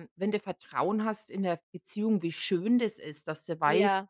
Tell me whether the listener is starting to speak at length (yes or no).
no